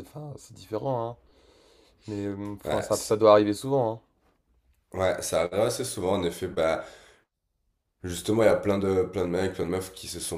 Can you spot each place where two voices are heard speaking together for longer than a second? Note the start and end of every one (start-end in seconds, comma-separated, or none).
none